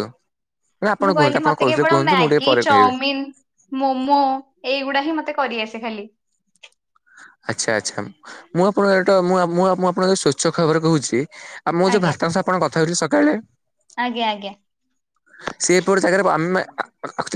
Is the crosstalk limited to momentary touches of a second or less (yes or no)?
no